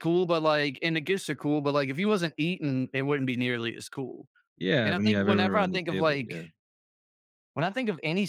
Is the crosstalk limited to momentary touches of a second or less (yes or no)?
no